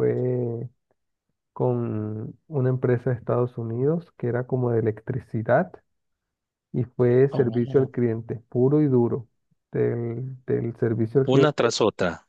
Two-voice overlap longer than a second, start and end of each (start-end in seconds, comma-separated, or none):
none